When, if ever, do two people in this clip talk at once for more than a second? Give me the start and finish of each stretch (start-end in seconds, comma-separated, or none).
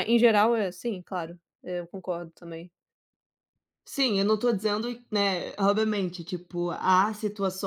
none